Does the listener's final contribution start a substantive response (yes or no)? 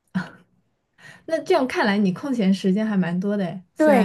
yes